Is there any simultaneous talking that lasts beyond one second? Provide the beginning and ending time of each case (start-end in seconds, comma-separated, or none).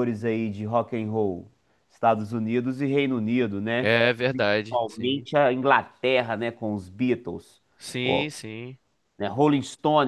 3.8-5.3